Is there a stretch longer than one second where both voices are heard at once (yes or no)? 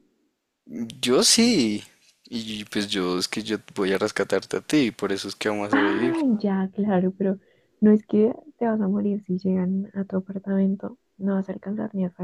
no